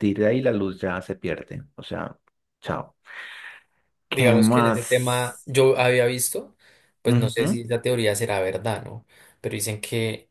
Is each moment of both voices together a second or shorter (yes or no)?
no